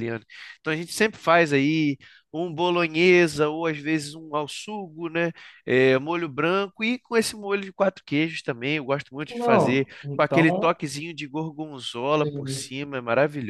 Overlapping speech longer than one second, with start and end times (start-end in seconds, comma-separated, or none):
9.3-10.8